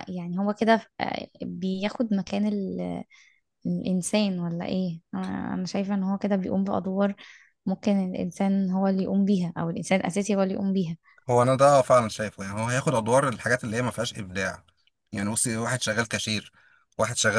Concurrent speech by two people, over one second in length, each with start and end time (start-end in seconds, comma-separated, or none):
none